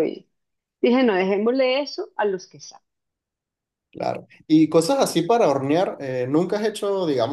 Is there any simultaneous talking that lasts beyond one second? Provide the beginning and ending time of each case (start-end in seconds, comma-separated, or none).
none